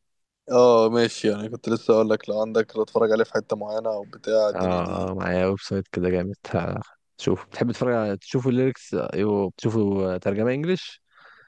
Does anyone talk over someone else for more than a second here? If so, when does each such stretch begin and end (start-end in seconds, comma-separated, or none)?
none